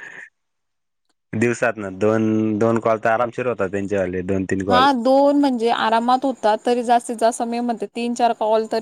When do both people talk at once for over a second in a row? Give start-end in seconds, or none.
none